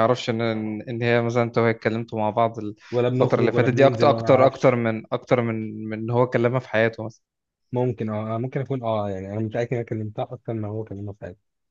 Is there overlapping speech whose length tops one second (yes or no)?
yes